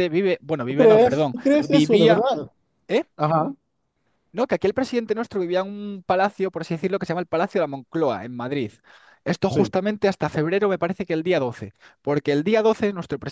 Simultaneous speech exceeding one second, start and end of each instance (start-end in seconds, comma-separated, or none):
0.7-2.3